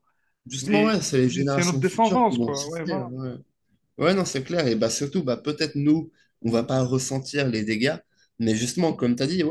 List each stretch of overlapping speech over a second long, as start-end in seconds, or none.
0.6-3.0